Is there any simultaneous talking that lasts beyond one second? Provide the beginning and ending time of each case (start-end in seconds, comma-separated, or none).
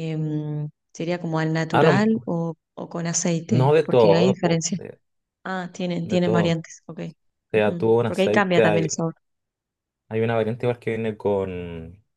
3.5-4.8, 7.5-8.9